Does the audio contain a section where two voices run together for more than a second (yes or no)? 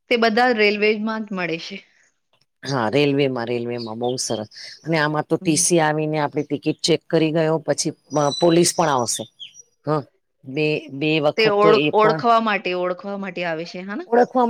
no